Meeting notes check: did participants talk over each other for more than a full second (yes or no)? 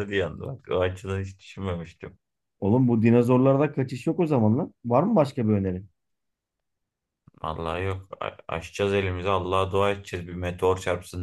no